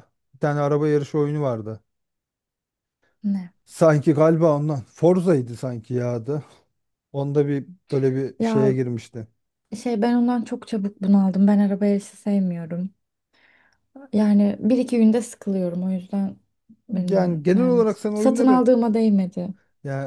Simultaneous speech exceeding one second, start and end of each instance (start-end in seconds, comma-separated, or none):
16.9-18.7